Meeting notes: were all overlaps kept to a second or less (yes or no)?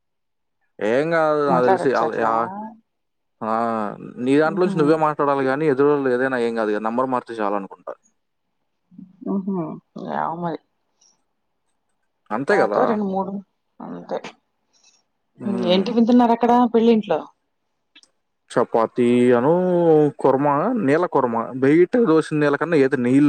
yes